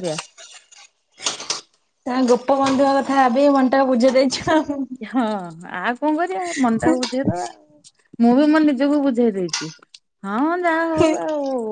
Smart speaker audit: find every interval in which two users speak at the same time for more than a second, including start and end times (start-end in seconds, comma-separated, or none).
none